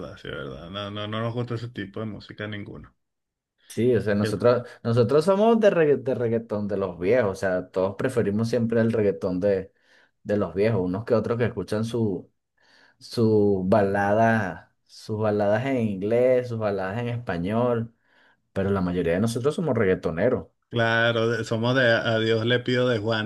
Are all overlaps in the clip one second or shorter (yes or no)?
yes